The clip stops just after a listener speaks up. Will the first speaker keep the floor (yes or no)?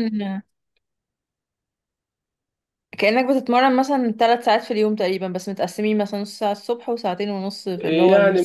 no